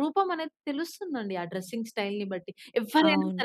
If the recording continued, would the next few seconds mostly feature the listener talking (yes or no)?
no